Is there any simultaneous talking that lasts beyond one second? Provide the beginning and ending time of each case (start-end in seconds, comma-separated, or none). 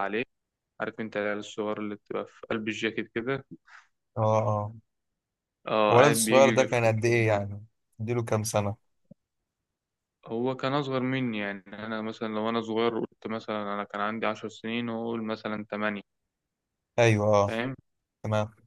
5.9-7.4